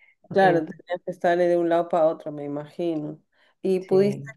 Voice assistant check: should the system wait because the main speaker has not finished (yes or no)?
yes